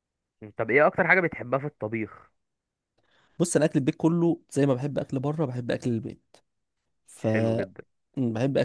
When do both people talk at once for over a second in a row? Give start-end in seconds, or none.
none